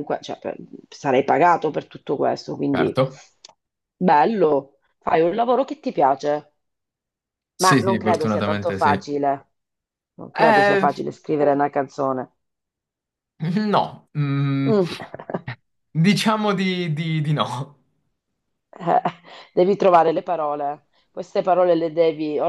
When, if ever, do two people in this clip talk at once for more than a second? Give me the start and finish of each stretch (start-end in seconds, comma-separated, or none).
7.6-9.1